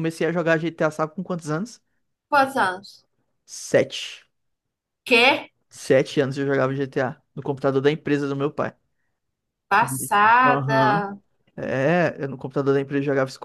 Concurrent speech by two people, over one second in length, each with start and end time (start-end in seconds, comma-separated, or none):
9.7-11.1